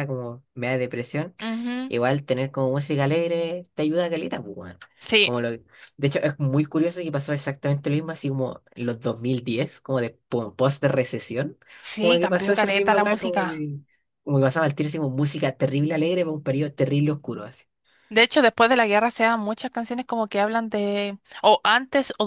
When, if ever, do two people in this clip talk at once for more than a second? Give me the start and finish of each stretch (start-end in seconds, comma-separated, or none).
12.0-13.7